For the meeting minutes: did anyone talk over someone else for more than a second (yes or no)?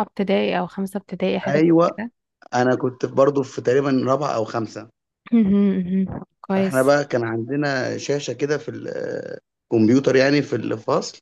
no